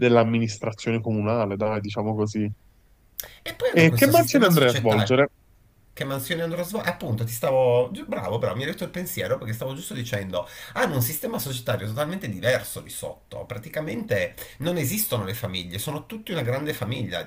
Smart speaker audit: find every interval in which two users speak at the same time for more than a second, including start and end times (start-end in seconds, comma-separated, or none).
3.7-5.3